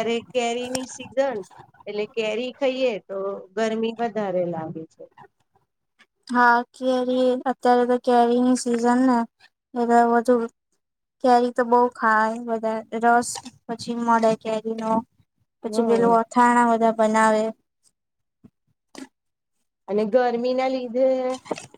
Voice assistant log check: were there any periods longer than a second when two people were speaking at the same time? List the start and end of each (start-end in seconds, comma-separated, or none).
none